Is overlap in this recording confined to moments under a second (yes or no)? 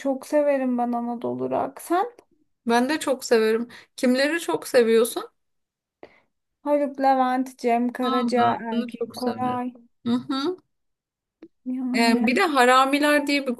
no